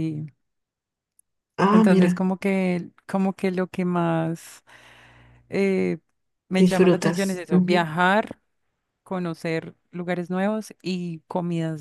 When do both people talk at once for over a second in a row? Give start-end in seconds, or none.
6.6-7.9